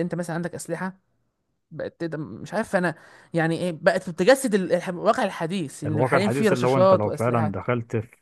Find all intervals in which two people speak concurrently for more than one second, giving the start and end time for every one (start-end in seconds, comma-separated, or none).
5.8-7.5